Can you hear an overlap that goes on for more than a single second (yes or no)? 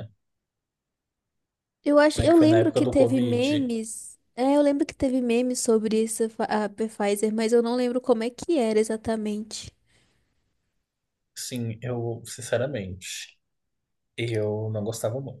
yes